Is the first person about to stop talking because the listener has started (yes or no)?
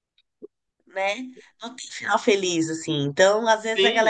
no